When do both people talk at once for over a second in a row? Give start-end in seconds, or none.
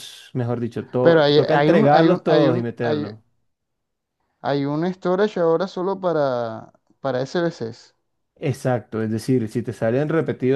1.0-3.1